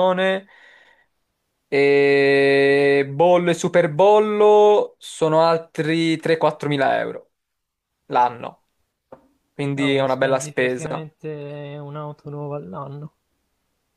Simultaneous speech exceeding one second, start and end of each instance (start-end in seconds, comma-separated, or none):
9.7-11.1